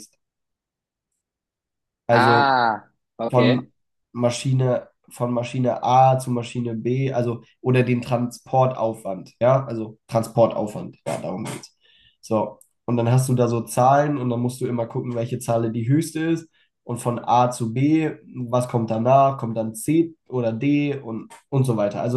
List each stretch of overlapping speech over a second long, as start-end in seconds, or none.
none